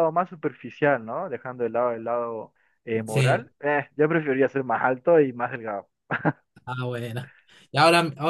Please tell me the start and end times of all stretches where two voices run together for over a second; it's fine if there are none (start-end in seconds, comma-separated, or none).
none